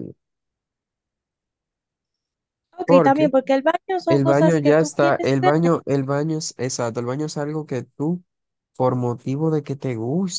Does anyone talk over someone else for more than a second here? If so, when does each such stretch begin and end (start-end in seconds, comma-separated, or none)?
4.1-5.5